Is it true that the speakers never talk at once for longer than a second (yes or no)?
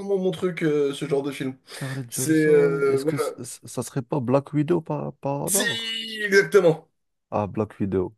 no